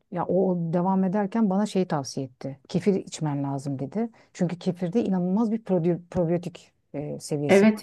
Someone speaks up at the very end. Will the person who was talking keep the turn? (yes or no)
no